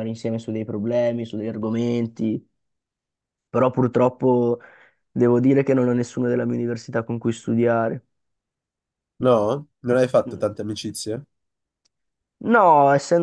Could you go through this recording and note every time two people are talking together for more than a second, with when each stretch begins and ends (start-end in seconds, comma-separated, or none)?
none